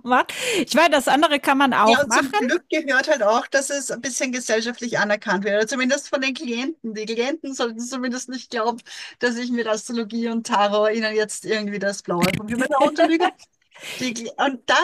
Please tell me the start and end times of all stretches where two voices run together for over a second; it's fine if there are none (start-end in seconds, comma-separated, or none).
none